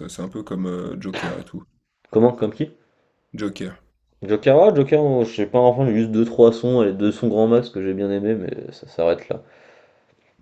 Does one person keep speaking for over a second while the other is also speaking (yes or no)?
no